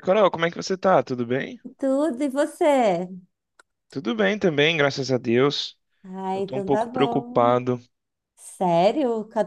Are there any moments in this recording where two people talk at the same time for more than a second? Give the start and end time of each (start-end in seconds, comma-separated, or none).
6.3-7.6